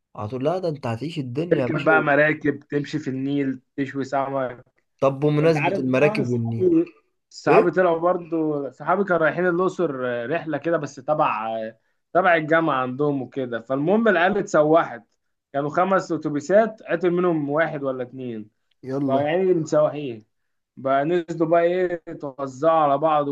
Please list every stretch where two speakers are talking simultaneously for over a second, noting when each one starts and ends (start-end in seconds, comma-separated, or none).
5.4-6.7